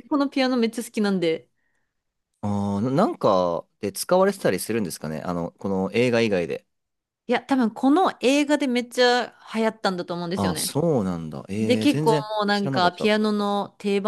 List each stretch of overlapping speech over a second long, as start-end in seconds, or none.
11.6-13.1